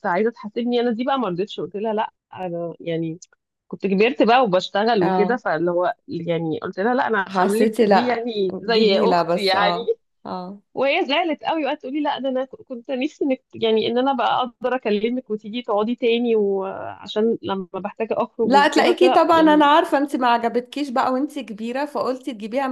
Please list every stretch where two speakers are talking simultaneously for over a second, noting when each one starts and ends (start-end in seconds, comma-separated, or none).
7.3-9.8, 18.4-19.7